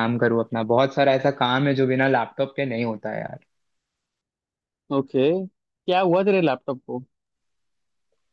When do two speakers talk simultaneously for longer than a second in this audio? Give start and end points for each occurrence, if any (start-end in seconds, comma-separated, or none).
none